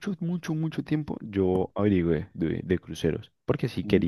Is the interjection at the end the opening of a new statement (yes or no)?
no